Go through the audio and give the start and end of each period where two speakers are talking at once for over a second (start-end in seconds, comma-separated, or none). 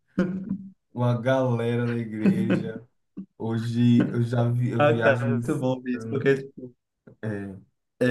4.8-6.3